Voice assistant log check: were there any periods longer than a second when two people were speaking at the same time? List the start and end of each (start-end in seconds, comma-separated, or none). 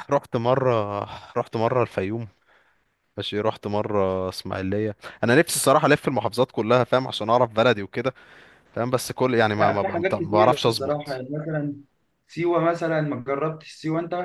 9.6-11.2